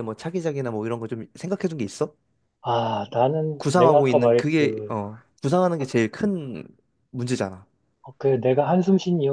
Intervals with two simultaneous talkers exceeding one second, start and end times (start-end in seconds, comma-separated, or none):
3.6-5.0